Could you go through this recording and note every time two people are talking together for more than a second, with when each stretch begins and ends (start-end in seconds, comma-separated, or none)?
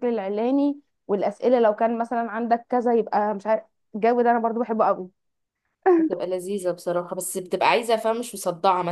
none